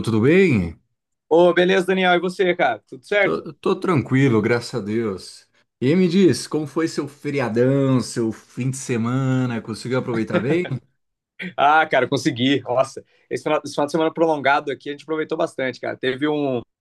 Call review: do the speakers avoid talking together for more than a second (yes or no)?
yes